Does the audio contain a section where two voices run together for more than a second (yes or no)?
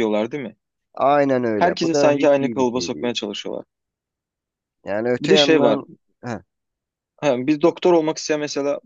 yes